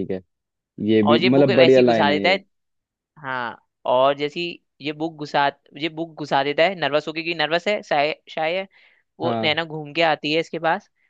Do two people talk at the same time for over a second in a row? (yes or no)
yes